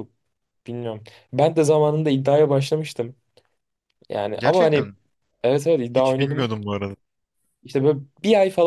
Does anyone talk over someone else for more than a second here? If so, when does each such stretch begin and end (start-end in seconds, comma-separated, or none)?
none